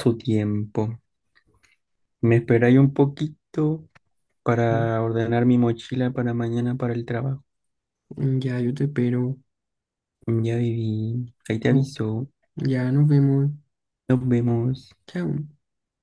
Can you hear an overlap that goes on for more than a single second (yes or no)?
no